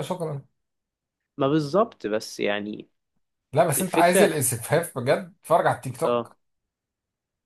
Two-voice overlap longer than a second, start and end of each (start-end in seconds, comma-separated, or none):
none